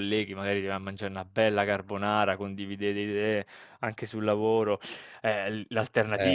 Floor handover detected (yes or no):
no